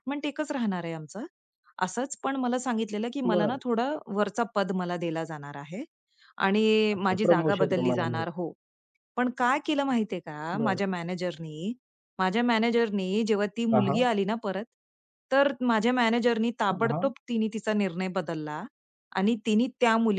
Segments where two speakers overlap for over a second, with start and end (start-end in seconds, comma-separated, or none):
7.0-8.2